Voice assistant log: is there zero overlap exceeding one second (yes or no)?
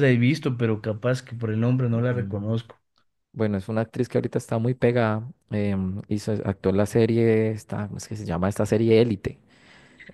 yes